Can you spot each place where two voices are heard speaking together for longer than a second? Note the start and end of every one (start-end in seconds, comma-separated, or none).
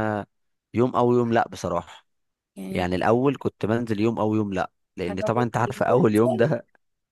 5.1-6.5